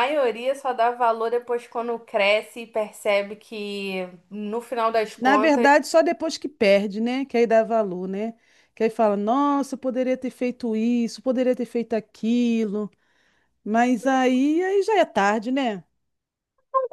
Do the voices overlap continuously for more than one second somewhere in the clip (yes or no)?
no